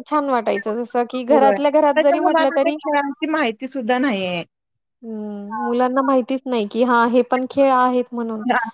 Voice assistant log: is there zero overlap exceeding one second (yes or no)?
no